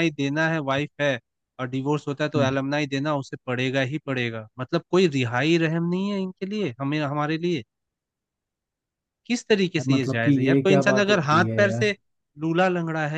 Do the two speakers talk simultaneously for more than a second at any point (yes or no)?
yes